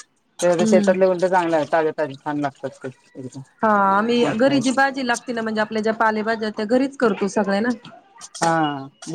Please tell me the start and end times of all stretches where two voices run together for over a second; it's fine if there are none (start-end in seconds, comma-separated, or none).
none